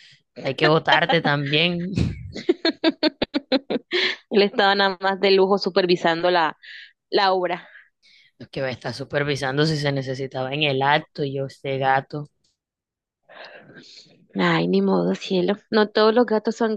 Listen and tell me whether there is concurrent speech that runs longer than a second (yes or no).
no